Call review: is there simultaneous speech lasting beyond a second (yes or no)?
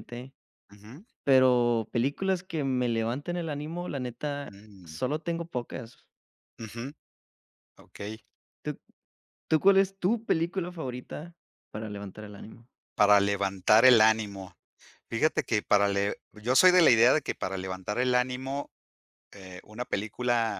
no